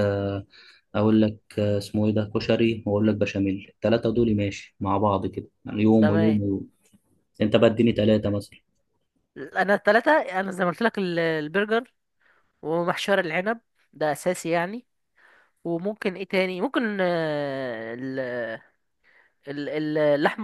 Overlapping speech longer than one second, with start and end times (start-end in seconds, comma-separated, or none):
none